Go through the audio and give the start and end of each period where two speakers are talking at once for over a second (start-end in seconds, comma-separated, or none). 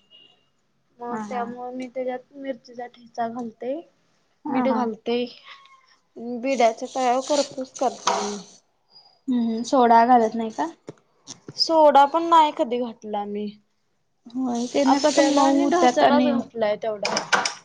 14.9-16.3